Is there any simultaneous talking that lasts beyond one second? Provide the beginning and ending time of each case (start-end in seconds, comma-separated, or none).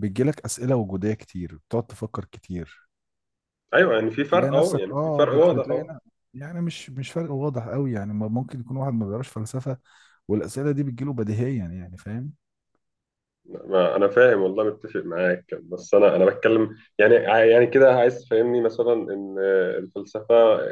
4.3-5.9